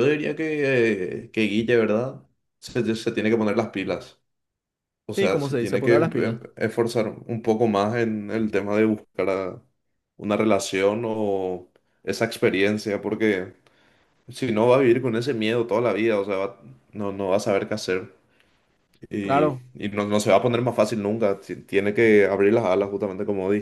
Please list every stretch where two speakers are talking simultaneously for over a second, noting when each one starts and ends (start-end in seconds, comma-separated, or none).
5.2-6.4